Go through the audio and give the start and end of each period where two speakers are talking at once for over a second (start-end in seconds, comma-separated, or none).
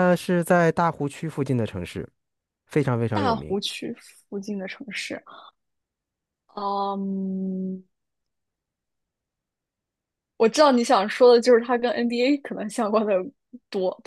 none